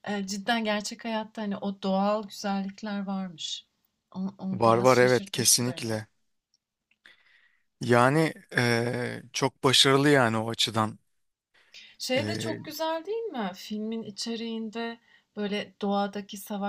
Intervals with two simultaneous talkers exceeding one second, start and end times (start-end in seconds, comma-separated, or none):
4.5-5.9